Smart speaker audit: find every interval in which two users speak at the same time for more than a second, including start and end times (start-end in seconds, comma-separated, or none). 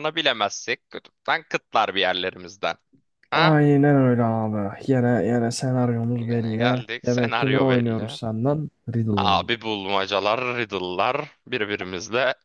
6.2-8.1